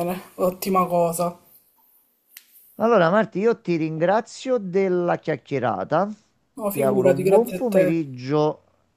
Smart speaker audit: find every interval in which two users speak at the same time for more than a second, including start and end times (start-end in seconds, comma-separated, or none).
6.7-8.0